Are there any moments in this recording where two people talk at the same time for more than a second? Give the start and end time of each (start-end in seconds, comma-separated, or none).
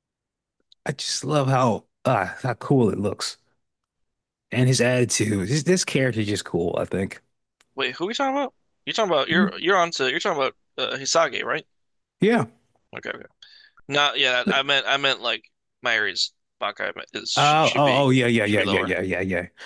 17.4-18.9